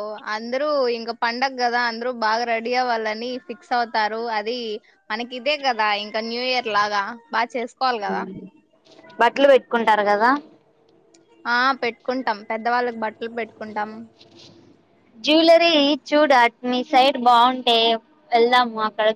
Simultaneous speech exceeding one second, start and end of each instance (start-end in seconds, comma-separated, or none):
none